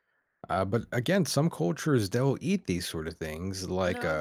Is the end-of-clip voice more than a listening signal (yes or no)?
no